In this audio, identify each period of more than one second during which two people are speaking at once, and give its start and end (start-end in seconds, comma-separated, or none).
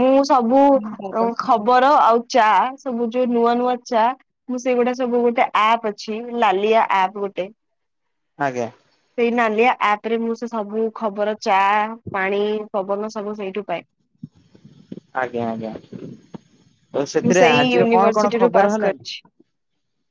17.2-19.1